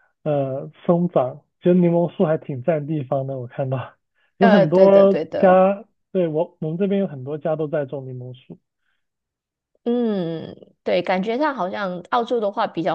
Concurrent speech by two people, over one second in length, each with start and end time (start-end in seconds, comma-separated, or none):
4.4-5.7